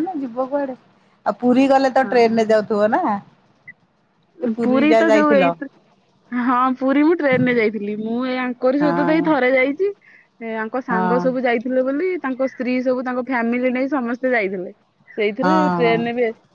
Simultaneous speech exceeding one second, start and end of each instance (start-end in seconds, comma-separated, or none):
none